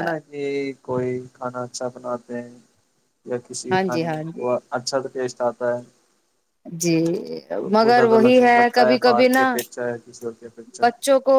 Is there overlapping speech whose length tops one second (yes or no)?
yes